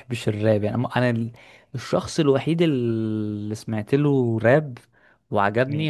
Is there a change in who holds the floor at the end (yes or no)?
no